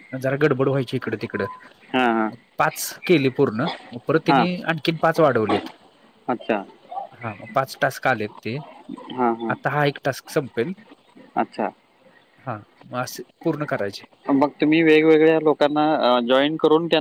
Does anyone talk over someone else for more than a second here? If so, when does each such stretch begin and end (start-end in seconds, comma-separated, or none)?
none